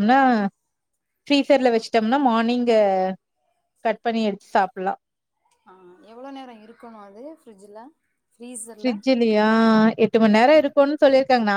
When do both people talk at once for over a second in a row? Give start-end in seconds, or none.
none